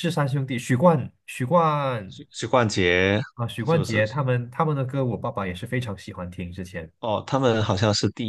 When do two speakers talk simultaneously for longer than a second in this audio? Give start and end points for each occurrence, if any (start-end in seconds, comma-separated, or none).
none